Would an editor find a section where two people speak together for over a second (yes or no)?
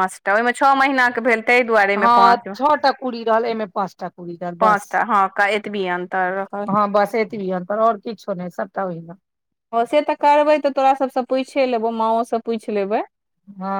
no